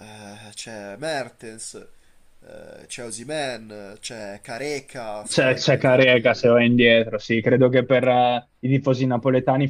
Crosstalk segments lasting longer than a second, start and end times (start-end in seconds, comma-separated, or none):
5.3-6.5